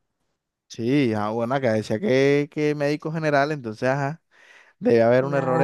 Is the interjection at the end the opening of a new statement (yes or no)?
no